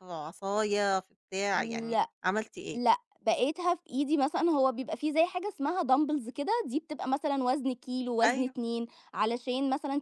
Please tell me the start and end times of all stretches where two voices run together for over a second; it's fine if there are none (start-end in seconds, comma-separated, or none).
none